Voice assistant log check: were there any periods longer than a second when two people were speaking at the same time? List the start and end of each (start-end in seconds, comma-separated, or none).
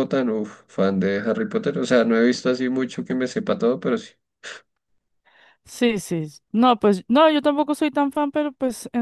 none